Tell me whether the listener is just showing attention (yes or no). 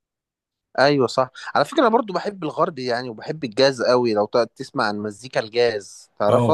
no